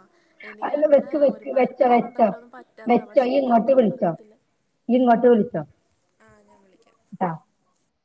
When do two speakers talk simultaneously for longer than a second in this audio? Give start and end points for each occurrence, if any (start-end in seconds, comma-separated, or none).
none